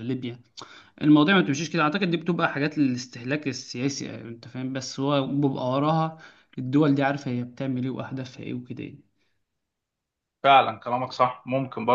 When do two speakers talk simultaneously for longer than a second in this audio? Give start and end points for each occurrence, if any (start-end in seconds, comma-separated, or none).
none